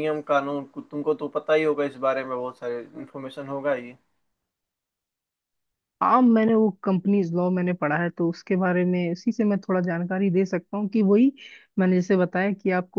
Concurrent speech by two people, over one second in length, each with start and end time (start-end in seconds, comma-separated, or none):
none